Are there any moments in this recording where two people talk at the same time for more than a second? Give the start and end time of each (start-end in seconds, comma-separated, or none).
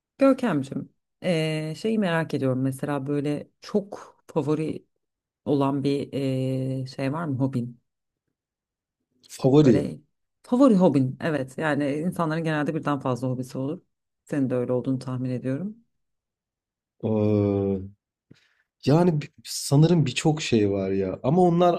none